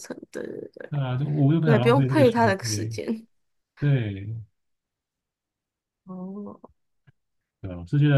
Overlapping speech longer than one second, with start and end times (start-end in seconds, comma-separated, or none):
1.6-3.0